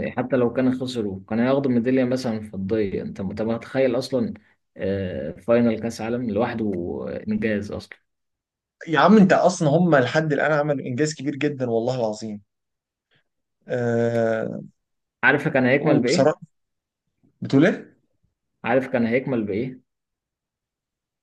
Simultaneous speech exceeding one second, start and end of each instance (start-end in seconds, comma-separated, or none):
none